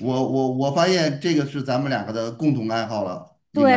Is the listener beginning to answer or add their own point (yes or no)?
yes